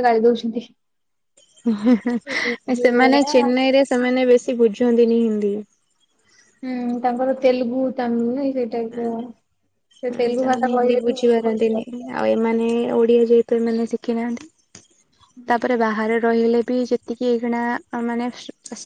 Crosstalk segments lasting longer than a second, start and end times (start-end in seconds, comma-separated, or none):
10.2-11.8